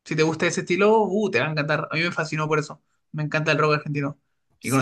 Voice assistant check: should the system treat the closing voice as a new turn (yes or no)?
yes